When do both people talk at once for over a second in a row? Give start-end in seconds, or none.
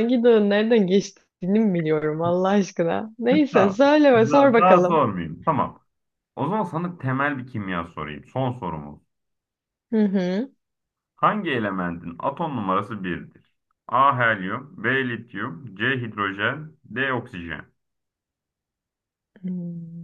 3.5-5.0